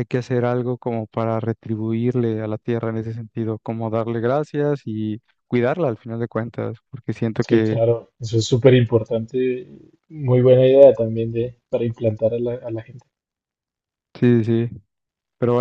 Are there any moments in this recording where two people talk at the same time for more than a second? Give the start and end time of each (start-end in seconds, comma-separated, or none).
none